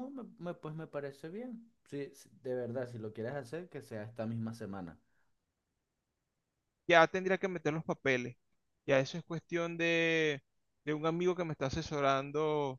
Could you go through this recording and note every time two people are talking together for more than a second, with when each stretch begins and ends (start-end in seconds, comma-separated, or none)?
none